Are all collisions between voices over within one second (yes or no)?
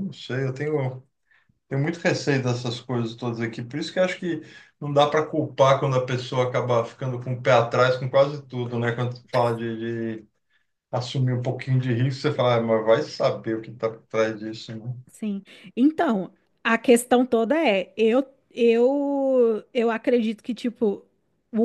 yes